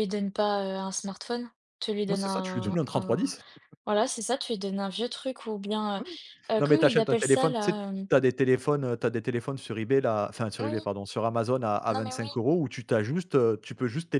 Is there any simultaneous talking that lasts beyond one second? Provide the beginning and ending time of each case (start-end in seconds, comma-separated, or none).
2.1-3.3, 6.6-8.1